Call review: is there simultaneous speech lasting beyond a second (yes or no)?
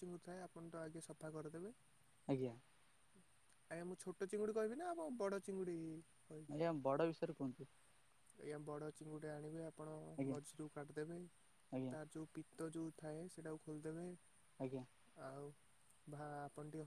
no